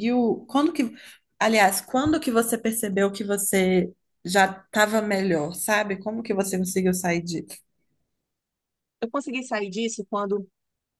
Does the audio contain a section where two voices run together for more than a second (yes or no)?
no